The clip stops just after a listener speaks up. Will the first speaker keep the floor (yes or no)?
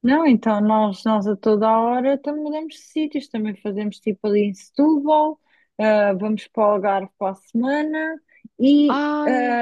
yes